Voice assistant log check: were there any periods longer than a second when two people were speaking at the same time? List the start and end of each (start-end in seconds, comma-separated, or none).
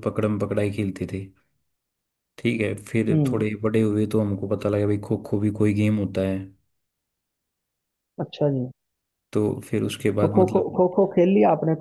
none